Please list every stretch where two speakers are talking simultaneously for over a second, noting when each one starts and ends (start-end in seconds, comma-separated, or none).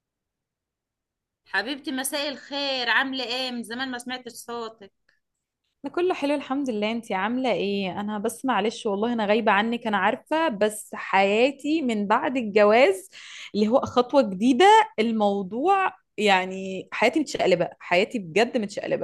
none